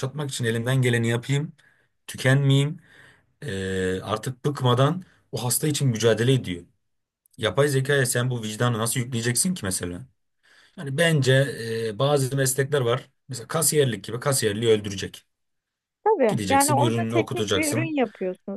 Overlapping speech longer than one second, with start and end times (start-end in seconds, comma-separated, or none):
16.3-17.9